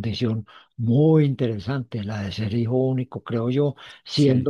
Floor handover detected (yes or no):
no